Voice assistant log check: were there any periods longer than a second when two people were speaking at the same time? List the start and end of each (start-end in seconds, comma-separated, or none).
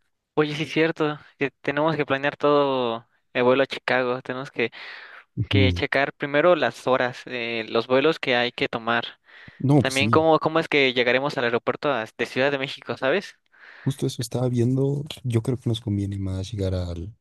none